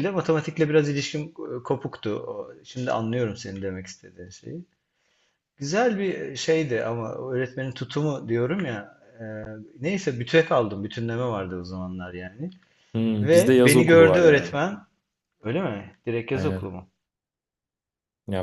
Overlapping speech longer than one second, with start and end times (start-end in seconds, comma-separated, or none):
13.2-14.6